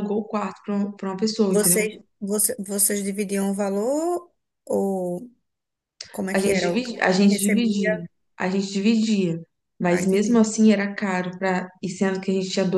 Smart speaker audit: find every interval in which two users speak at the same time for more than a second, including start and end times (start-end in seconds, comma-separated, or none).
6.3-8.0